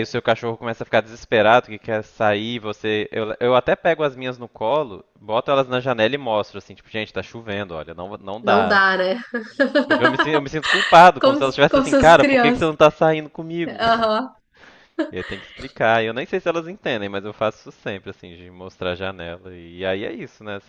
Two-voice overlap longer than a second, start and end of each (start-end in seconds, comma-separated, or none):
11.2-12.7